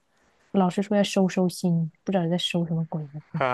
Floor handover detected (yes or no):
yes